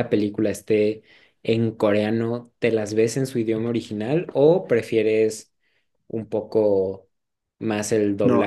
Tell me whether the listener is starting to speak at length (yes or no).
yes